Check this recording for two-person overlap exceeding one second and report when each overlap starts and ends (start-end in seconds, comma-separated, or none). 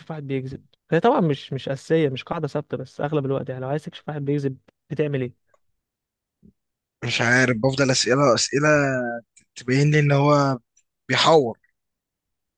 none